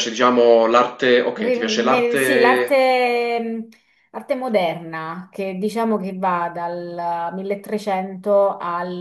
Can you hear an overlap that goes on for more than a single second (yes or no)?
yes